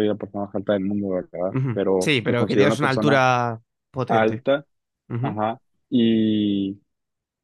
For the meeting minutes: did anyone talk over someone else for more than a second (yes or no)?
yes